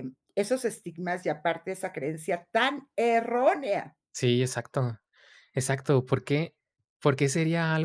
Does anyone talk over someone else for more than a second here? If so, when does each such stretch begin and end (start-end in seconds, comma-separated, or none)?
none